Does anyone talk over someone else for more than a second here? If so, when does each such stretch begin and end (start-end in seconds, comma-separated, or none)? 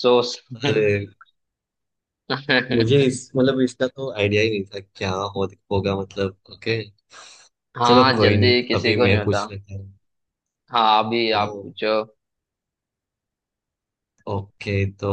7.8-9.4